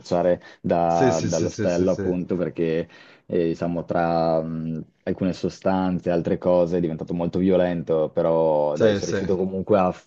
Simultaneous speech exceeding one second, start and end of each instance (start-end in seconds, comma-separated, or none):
0.9-2.1